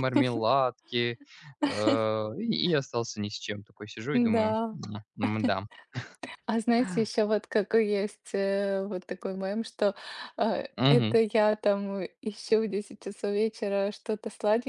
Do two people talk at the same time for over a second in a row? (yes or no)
no